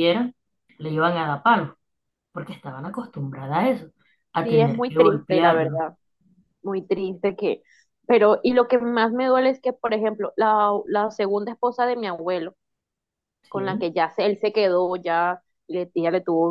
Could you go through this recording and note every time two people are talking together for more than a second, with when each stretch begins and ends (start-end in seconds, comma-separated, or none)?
4.4-5.8